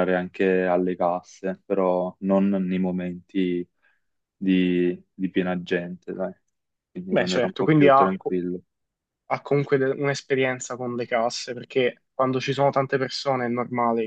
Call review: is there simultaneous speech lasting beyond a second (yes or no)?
yes